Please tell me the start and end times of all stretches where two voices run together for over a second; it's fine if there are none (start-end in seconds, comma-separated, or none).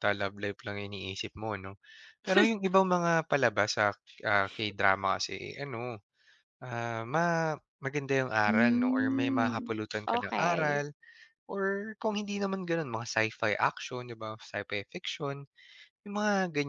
8.4-10.8